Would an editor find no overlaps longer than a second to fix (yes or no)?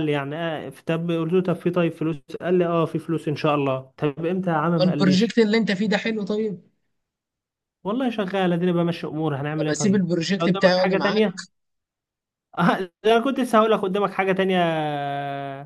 no